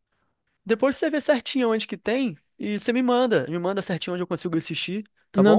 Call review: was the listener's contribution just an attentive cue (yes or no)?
no